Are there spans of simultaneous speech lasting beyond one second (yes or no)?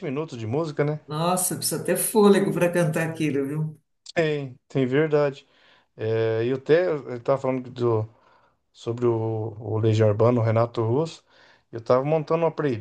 no